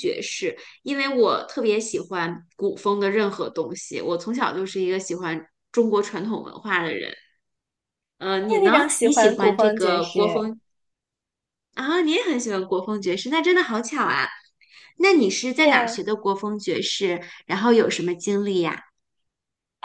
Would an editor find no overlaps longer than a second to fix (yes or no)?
no